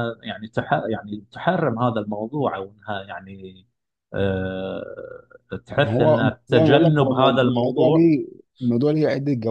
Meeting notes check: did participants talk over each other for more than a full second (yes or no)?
yes